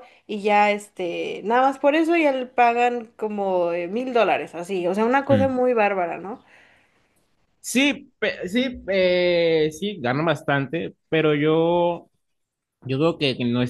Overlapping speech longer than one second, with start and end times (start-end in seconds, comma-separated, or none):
none